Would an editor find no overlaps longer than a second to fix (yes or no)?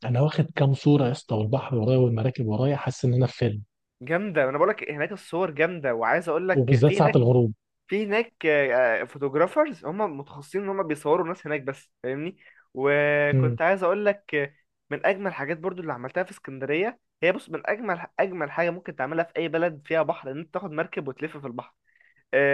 yes